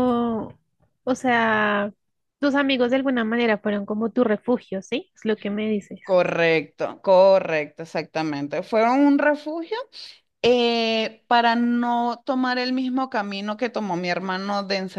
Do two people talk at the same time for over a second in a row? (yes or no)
no